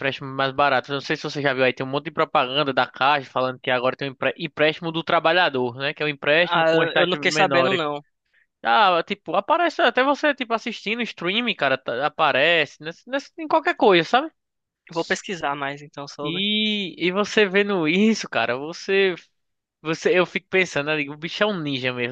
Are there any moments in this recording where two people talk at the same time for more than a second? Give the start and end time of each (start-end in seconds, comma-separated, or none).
6.4-7.8